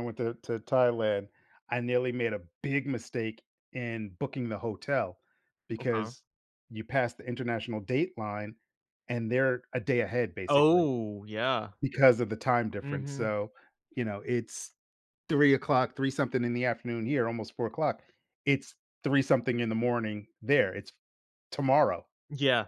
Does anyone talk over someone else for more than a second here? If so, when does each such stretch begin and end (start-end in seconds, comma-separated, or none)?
none